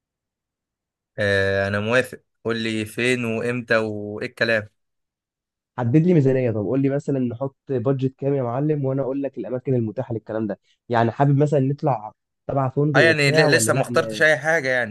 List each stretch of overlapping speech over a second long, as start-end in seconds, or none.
12.9-14.2